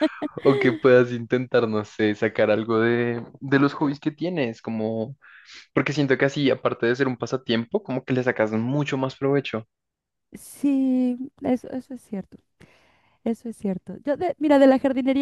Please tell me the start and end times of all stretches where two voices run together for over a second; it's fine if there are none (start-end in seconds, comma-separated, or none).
none